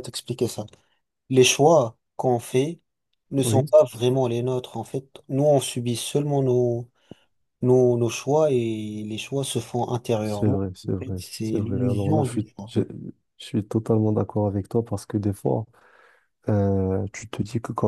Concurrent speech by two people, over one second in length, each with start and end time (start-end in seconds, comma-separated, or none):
10.2-12.8